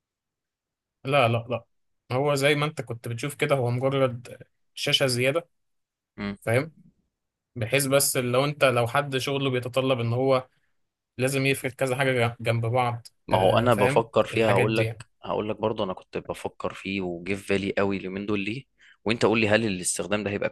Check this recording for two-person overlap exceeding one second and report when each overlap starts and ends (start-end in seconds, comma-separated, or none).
13.3-15.0